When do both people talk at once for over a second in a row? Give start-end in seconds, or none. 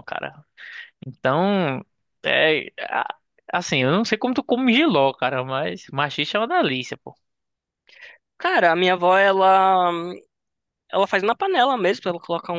none